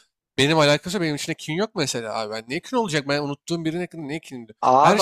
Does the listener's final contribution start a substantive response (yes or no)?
no